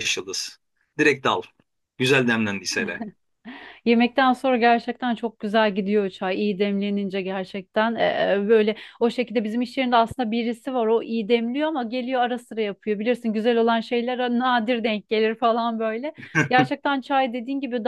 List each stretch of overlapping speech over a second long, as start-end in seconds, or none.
none